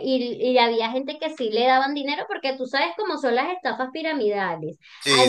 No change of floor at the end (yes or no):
yes